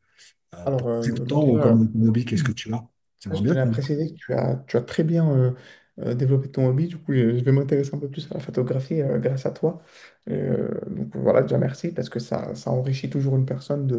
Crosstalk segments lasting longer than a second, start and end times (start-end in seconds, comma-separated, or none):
0.7-1.9